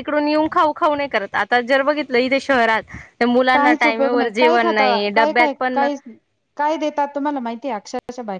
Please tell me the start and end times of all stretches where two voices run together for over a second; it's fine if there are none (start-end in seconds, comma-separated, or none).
3.5-5.8